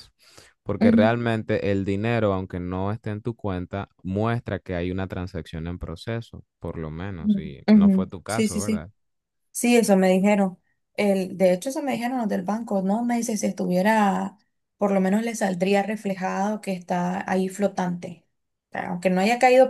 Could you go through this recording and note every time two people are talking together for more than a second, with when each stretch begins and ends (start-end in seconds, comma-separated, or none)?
7.2-8.9